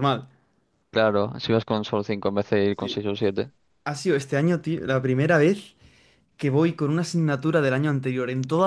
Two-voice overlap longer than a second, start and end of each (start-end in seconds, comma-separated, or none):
none